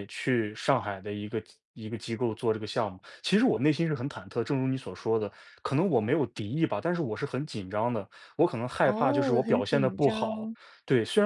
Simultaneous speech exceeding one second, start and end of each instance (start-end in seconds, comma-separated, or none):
8.8-10.5